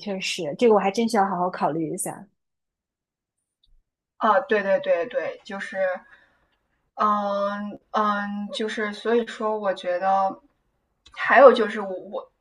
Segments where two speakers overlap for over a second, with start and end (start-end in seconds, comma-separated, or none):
none